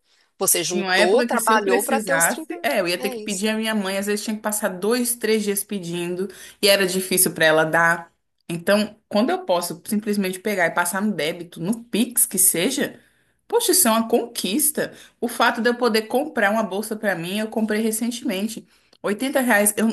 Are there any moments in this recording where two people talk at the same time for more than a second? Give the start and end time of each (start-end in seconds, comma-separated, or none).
0.7-3.5